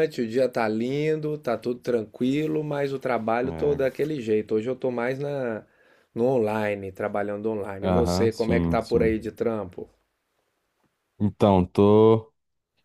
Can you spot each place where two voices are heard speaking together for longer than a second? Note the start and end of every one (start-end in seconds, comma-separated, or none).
7.8-9.3